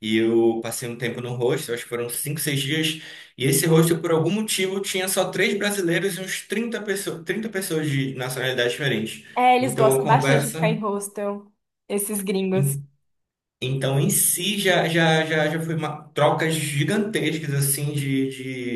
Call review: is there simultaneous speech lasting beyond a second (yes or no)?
yes